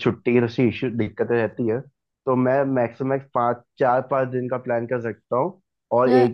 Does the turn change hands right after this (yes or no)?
no